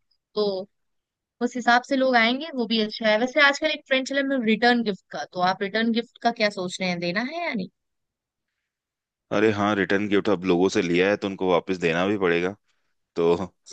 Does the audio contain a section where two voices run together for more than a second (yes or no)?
no